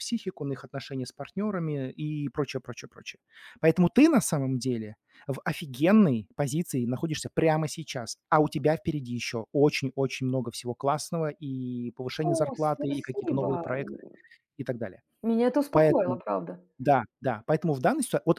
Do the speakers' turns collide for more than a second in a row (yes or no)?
yes